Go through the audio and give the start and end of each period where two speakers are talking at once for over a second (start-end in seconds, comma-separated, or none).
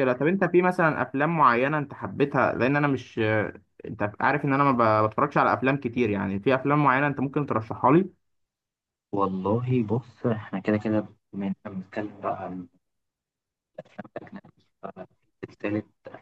none